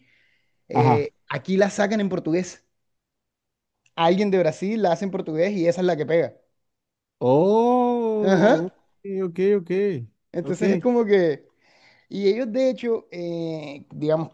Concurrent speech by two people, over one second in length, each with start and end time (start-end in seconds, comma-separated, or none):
none